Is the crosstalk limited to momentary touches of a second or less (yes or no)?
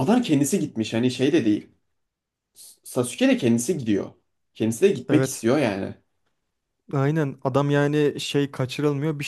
yes